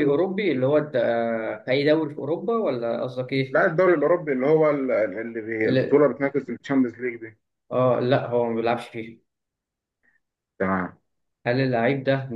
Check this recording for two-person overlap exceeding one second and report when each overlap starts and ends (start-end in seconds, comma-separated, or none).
none